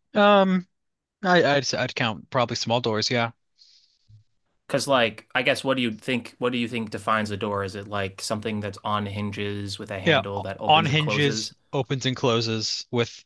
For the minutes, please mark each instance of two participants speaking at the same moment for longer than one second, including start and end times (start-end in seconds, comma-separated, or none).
10.0-11.5